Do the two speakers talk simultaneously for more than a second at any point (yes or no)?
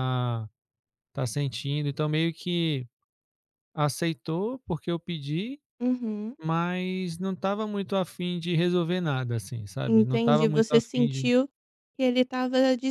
yes